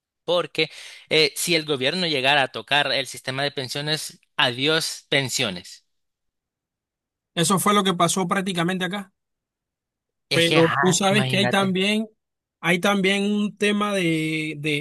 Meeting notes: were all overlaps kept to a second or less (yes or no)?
no